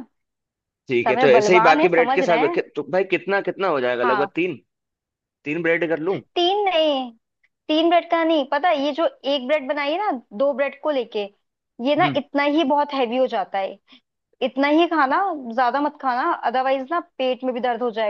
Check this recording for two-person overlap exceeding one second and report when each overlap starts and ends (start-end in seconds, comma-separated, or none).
1.1-2.6